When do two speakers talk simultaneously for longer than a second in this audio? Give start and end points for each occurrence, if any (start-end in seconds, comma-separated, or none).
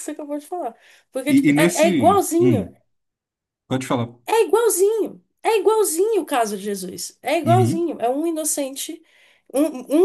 1.3-2.7